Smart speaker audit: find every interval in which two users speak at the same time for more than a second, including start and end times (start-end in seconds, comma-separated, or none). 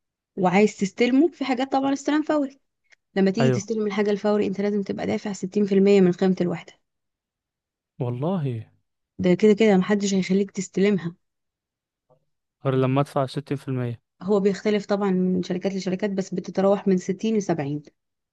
none